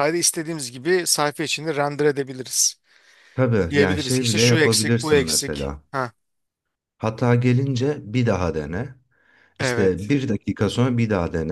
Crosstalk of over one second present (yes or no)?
yes